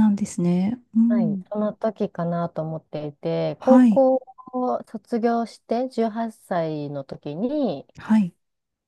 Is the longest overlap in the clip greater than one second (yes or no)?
no